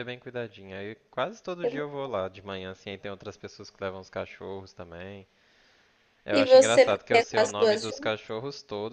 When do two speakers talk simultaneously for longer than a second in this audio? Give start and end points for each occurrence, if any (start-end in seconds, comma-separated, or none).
6.3-7.8